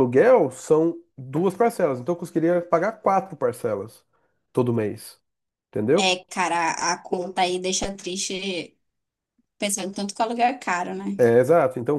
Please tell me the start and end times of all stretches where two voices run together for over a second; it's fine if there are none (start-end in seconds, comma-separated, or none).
none